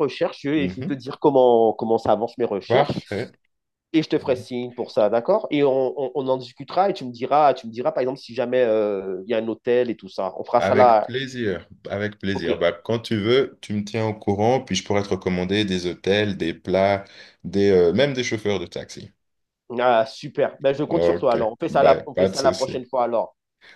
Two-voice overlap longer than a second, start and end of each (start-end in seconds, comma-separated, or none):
20.9-22.8